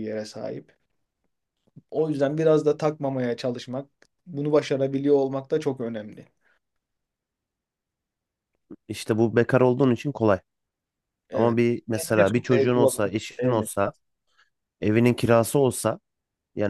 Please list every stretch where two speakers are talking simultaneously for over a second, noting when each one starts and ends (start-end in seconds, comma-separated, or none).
11.3-13.7